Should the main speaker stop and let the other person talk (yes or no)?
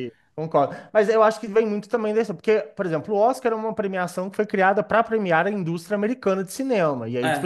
no